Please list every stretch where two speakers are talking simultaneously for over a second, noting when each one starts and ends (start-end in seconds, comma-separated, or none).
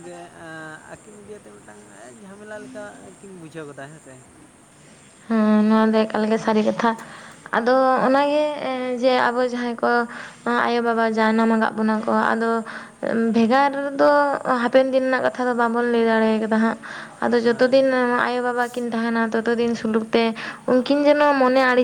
none